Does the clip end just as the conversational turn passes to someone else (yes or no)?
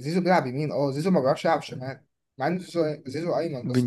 yes